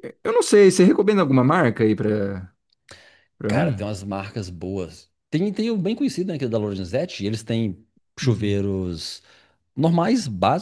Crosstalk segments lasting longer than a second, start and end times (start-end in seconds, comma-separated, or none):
none